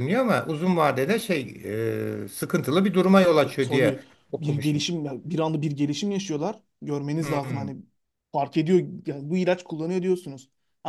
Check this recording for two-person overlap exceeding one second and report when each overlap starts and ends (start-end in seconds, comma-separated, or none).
3.4-4.8